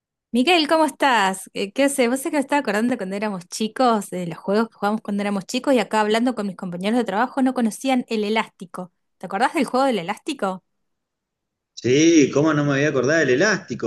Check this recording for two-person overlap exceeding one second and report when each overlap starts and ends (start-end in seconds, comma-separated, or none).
none